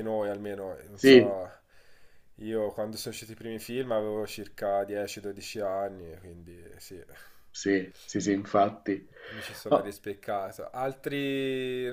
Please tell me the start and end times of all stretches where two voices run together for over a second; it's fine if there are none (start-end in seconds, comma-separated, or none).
none